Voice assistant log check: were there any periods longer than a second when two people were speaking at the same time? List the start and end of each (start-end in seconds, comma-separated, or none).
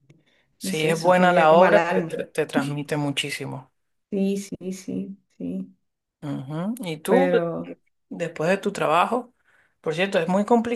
0.6-2.2